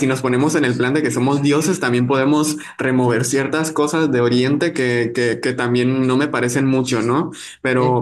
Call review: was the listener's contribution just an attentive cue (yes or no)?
yes